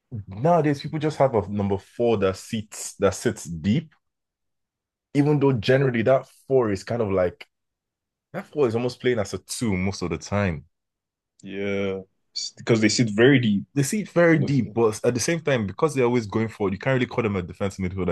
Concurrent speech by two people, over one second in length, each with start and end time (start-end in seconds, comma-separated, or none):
none